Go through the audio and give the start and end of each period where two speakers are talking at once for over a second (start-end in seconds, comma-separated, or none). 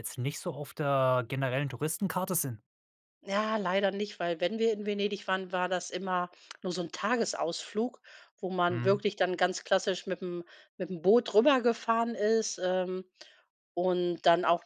none